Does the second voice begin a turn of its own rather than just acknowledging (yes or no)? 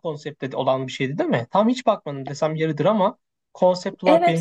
yes